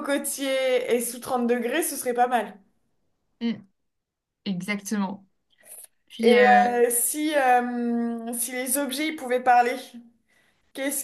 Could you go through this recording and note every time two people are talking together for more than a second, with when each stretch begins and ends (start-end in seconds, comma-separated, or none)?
none